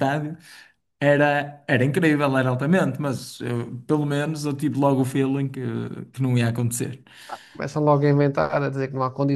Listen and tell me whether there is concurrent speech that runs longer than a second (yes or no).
no